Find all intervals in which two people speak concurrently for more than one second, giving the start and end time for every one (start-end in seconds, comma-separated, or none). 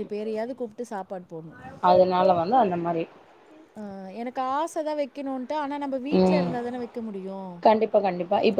none